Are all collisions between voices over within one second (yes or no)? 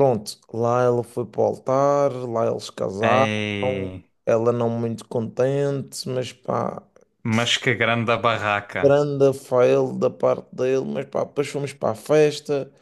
yes